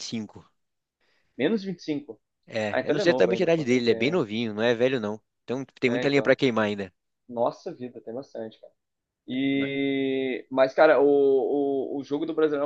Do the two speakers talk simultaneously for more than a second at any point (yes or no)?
yes